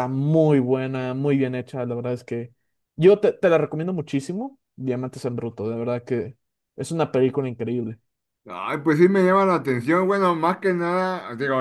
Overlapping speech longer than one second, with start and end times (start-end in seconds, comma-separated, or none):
none